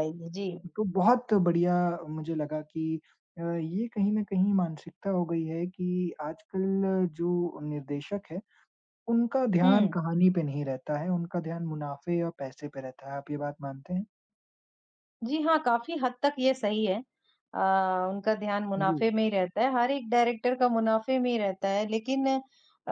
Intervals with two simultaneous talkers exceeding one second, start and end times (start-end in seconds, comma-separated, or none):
none